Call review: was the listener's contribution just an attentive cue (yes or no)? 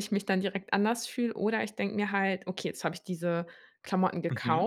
yes